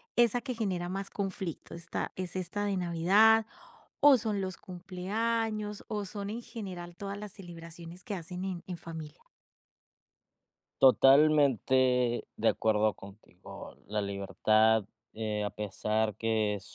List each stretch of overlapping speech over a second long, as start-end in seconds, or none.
none